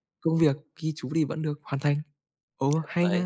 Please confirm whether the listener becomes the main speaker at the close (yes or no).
yes